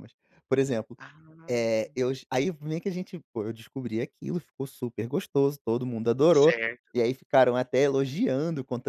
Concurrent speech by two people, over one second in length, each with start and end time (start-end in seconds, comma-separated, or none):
none